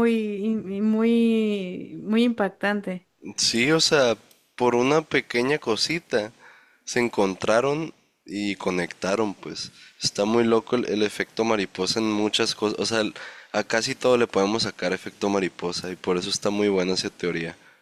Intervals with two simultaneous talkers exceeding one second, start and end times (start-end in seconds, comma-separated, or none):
none